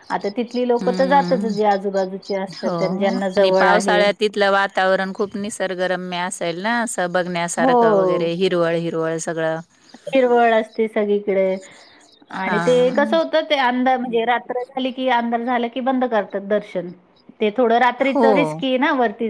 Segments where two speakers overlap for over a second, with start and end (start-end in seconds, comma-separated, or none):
none